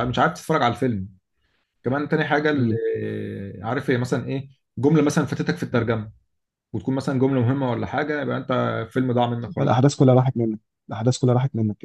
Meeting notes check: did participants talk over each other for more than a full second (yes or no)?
no